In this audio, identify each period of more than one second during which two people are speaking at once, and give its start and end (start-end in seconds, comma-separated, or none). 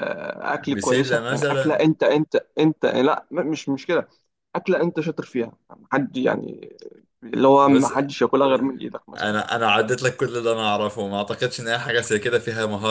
0.6-1.9